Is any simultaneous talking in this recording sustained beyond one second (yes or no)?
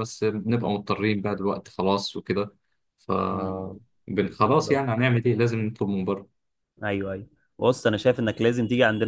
no